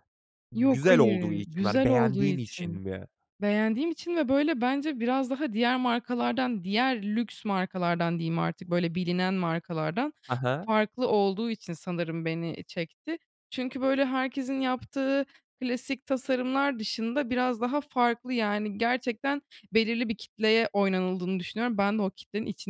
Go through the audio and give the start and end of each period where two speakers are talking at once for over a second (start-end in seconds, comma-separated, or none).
0.6-2.8